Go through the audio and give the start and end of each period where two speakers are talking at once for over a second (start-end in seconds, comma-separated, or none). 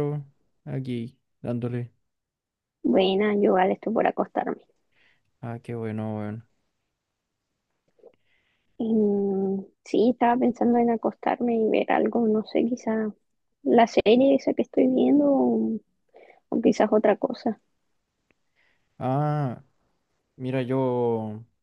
none